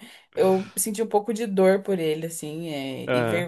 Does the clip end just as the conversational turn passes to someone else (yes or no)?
no